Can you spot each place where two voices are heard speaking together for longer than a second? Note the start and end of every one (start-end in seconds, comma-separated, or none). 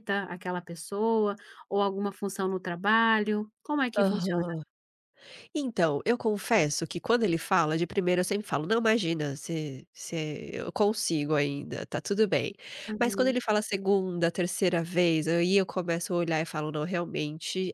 none